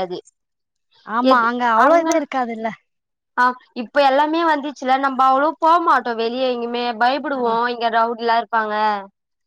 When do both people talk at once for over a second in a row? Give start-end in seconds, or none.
none